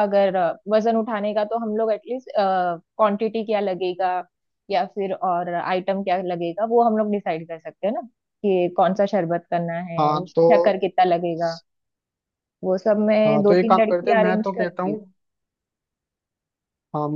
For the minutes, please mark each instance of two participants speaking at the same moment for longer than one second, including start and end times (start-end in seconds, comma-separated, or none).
13.3-15.0